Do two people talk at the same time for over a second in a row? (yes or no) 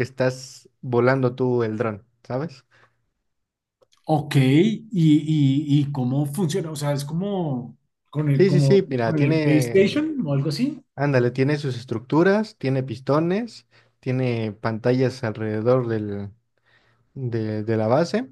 yes